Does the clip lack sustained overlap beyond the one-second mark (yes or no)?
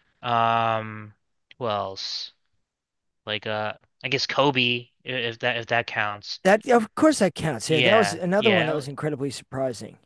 no